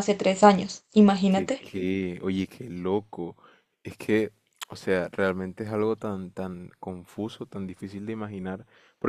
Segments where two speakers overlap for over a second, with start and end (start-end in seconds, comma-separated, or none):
none